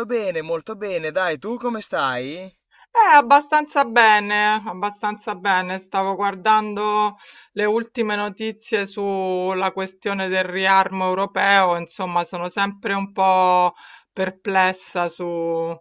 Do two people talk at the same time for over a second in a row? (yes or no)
no